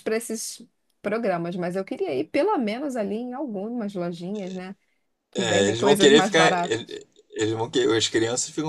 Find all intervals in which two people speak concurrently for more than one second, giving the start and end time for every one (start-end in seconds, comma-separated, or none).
5.4-7.0